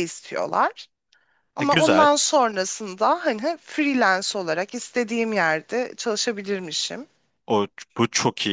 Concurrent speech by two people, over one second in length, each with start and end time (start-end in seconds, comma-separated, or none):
none